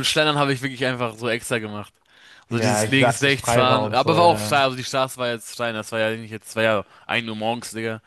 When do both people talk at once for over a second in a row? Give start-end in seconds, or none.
2.5-4.5